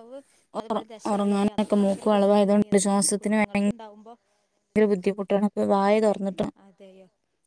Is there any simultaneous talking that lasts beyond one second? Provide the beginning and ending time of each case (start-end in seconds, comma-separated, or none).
1.1-3.4